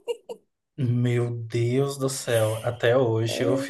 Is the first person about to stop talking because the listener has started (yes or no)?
no